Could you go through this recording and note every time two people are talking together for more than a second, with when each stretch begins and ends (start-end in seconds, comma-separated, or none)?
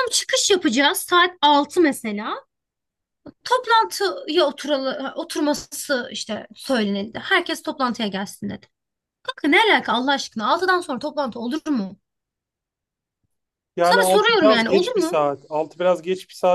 13.8-15.2